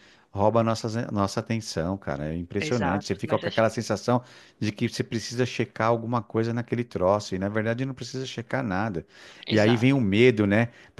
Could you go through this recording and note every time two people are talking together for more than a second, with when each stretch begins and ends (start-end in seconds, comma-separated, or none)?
2.6-3.8